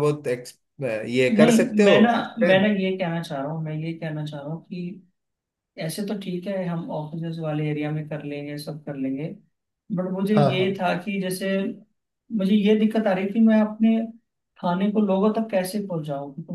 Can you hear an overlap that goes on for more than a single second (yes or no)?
no